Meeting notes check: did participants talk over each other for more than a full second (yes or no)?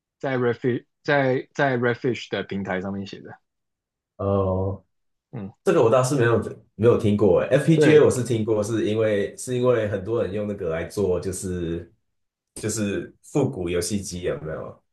no